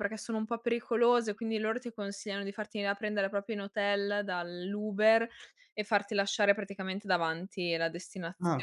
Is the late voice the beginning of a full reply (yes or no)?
yes